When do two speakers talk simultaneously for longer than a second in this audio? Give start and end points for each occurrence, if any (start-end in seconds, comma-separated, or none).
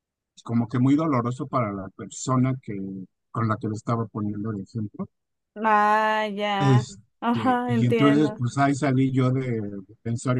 6.6-8.4